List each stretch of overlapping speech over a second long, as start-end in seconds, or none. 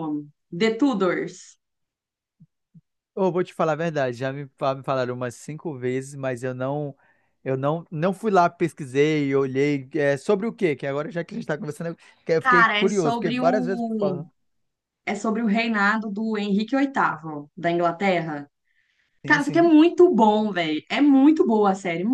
12.4-14.2